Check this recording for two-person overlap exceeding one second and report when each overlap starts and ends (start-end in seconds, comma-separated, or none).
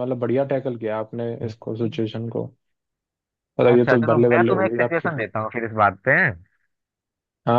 3.7-5.3